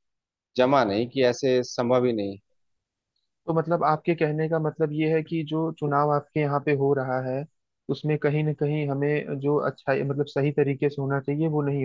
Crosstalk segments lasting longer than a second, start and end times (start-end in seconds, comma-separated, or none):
none